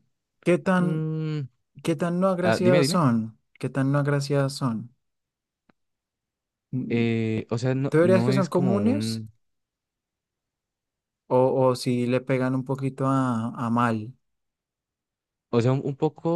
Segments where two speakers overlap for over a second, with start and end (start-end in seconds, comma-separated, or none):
7.9-9.2